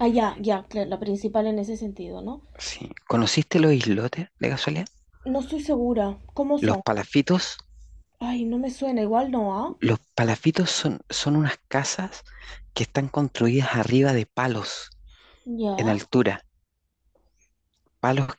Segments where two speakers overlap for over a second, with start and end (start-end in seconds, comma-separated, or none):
none